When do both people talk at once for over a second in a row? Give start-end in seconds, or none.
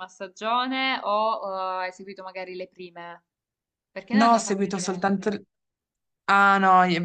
4.1-5.3